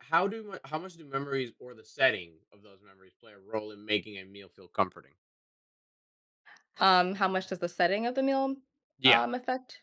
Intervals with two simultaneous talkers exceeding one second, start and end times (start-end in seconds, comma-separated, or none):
none